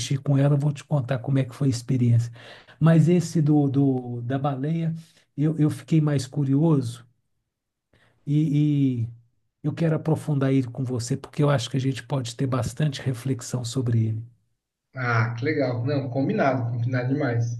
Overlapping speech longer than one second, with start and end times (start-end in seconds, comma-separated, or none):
none